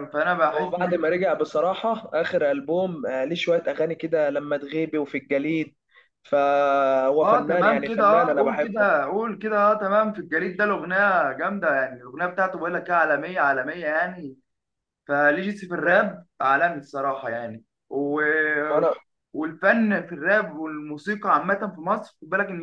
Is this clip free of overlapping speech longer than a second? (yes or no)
no